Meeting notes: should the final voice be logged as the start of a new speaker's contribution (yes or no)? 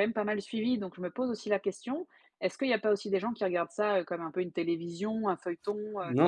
yes